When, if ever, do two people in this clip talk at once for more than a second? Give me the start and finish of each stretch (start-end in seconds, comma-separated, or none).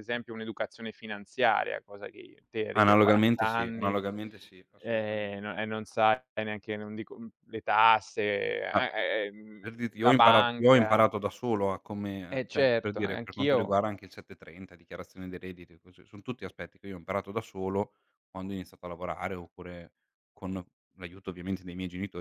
2.8-4.0, 9.6-11.1, 12.3-13.8